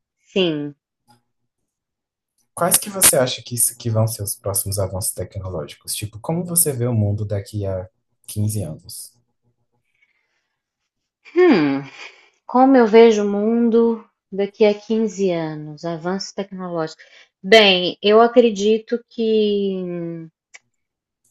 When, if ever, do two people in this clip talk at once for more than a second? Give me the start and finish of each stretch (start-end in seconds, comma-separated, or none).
none